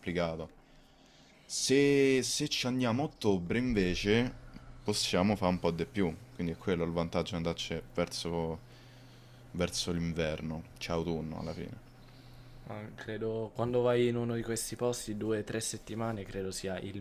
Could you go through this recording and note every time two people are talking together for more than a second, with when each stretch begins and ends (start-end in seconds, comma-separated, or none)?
none